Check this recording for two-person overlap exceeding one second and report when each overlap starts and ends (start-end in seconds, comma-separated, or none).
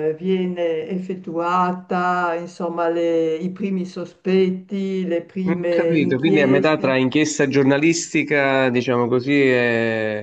5.5-7.0